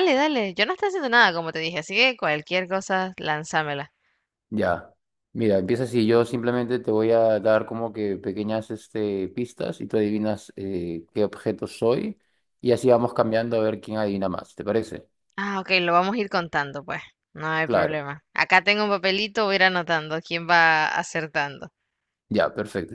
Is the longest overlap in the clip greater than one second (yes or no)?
no